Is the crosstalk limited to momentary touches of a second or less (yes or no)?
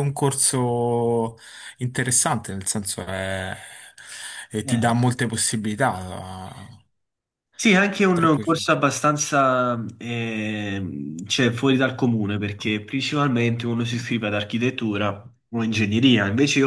yes